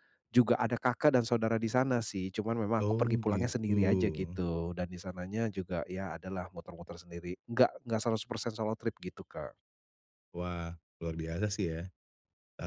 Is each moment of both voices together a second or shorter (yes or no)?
no